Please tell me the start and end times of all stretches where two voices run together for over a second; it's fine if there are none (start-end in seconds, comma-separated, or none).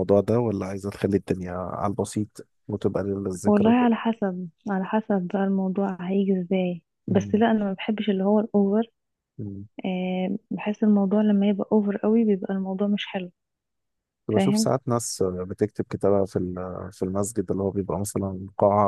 none